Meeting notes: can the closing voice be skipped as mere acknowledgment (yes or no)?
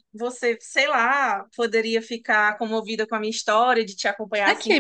no